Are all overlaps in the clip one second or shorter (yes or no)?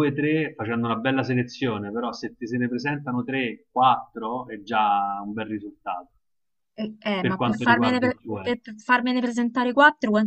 no